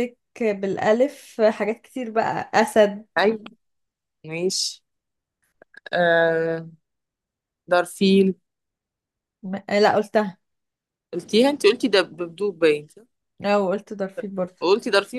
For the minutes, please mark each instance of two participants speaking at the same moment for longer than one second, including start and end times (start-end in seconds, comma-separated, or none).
none